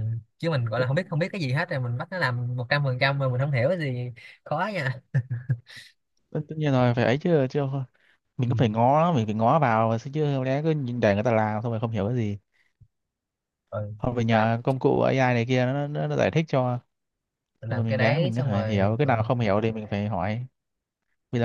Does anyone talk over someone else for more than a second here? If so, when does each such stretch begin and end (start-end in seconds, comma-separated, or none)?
17.7-19.3